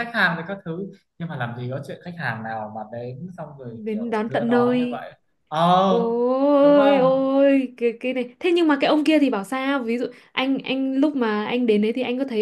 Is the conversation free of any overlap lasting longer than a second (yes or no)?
no